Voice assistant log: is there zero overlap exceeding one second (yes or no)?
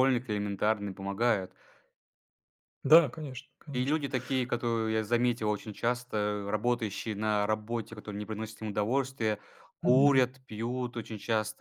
yes